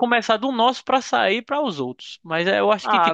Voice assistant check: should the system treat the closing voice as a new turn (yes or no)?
yes